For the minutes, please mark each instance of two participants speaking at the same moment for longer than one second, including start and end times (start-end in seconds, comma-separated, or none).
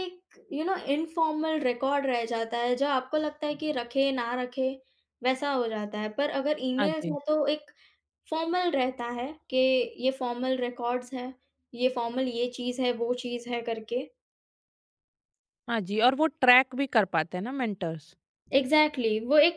none